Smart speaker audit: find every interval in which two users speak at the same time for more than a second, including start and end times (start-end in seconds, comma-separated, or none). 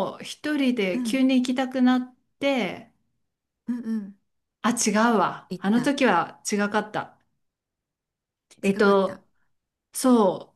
none